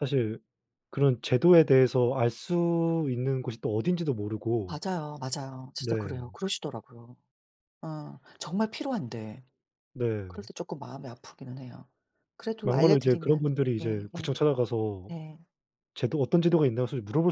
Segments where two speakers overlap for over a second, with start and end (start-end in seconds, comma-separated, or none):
12.6-14.3